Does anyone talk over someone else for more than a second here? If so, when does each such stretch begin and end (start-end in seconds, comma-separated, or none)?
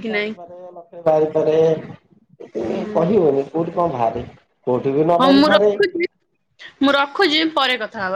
none